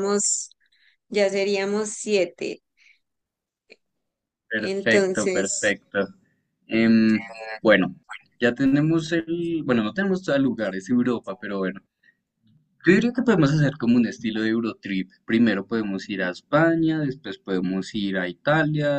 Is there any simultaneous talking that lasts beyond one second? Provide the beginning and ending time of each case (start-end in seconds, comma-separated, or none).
4.6-5.8